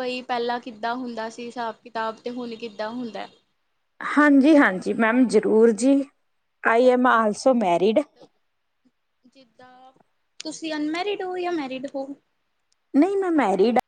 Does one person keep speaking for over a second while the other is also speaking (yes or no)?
no